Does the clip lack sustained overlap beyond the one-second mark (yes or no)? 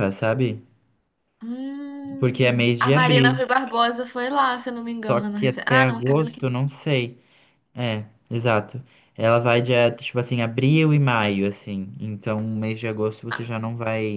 no